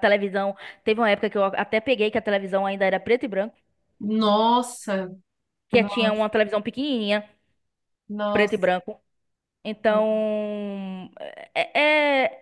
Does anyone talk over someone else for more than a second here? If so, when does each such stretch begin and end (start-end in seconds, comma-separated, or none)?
none